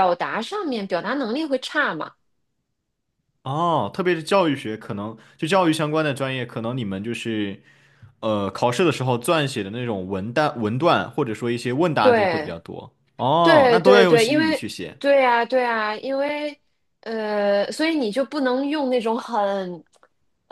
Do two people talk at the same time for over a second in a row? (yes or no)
yes